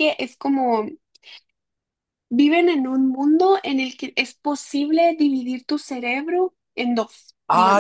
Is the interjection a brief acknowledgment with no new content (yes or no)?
no